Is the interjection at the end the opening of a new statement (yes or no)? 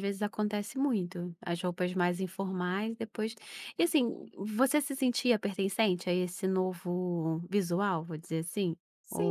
yes